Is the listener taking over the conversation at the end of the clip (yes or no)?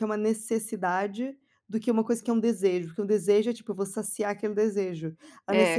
no